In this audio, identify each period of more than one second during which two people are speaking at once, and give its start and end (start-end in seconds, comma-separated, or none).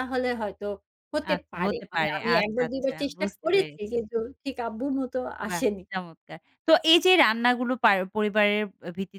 1.3-4.0